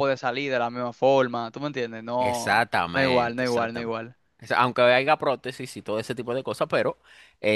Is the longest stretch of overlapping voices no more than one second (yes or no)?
no